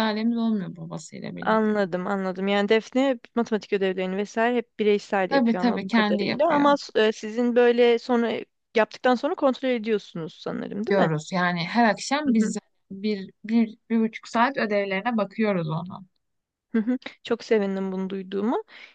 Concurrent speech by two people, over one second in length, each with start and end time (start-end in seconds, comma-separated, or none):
5.3-6.7